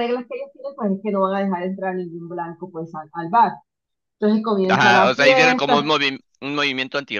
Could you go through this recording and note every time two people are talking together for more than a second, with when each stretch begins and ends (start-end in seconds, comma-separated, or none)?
4.7-5.9